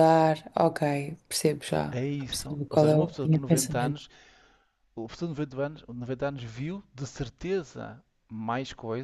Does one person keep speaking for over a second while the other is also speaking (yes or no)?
yes